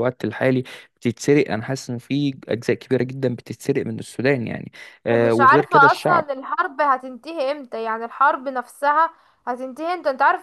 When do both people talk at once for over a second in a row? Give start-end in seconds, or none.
5.1-6.3